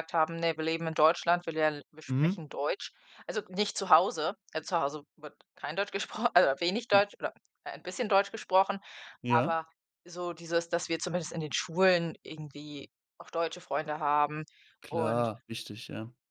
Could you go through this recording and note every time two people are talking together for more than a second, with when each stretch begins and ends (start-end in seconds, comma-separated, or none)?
none